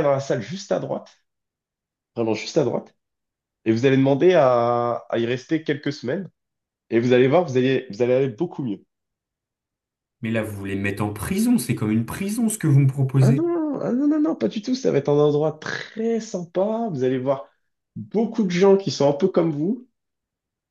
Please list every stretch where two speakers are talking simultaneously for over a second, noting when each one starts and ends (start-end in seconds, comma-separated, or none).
none